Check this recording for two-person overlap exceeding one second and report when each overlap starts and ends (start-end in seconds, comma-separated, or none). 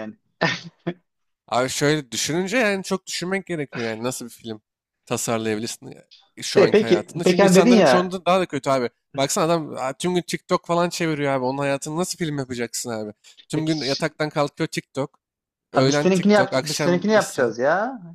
6.5-8.2, 15.7-17.5